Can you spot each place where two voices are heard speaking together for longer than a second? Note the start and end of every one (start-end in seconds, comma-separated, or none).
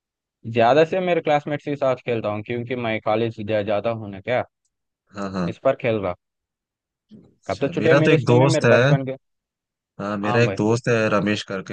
7.5-8.9